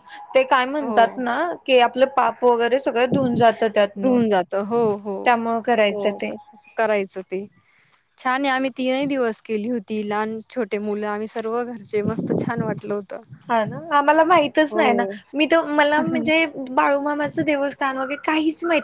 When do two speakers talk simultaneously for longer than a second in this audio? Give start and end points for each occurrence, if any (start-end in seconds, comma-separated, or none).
none